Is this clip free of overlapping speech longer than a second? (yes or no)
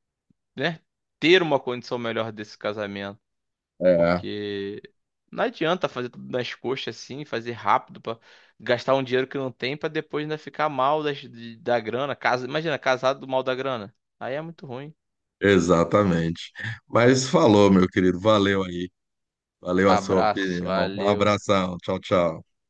no